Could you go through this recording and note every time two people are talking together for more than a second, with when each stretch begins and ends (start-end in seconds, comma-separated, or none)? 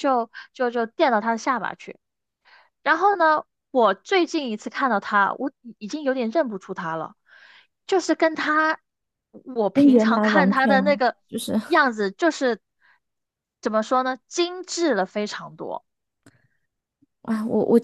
9.7-11.2